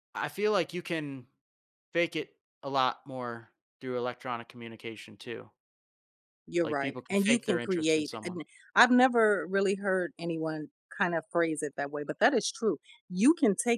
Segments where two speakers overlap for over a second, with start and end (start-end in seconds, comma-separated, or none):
6.6-8.4